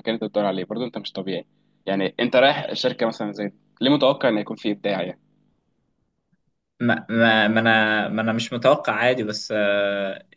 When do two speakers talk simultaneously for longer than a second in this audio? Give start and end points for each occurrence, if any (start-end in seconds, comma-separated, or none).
none